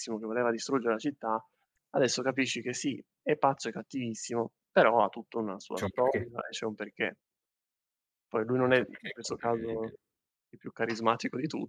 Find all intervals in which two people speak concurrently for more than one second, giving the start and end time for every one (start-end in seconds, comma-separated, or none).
8.6-9.9